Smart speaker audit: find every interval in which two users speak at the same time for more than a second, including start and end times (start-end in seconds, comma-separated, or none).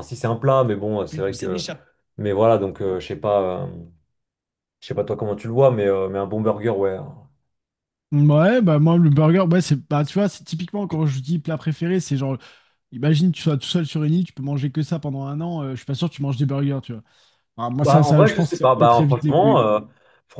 17.8-19.7